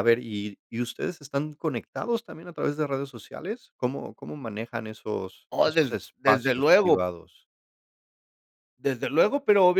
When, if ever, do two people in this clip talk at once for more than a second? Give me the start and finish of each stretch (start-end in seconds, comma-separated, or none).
5.5-7.1